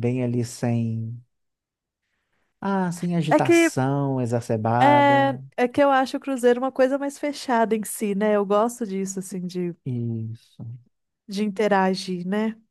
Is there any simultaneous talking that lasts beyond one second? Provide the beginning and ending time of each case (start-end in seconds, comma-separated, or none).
none